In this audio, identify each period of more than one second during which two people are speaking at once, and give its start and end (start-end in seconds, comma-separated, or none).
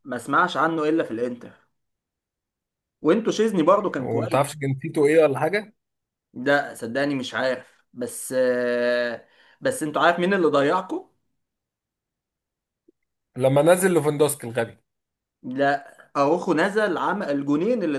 none